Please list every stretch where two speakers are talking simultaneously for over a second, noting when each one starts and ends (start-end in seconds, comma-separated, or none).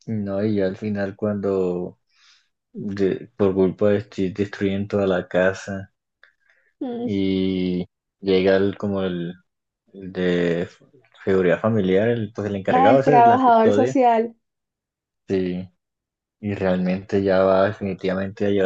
12.7-13.9